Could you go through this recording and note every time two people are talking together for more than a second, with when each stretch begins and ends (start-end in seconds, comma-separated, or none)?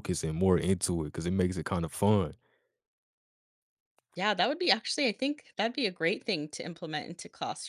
none